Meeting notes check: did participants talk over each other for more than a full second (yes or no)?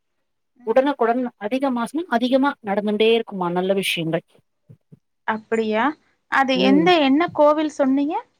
no